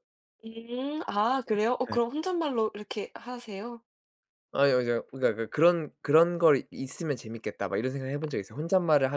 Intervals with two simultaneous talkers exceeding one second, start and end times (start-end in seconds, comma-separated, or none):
none